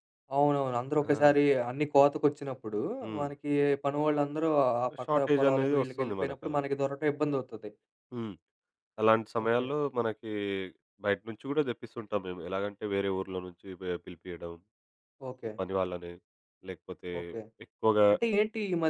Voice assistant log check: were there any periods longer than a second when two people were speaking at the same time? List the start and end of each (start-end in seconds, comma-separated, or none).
5.0-6.7